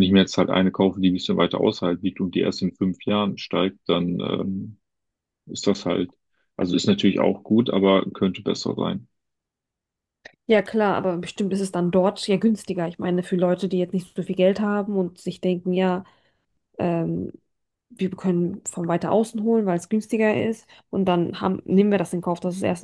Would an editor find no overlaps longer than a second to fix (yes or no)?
yes